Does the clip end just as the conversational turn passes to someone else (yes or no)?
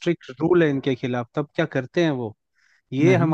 no